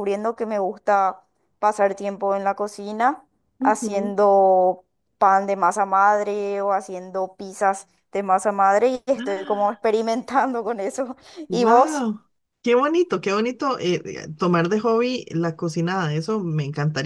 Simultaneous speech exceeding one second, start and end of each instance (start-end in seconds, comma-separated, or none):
none